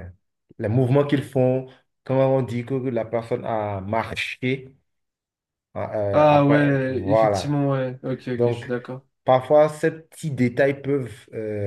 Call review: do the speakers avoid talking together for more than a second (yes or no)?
no